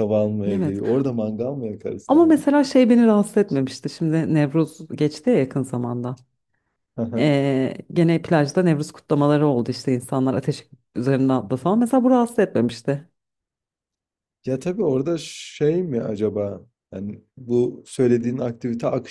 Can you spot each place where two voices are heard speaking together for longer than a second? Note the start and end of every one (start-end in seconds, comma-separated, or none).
none